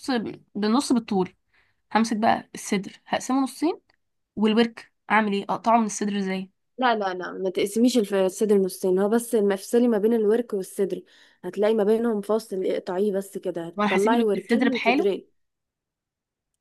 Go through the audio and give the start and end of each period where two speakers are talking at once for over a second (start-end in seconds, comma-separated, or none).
13.8-15.1